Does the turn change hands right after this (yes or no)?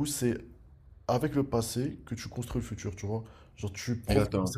no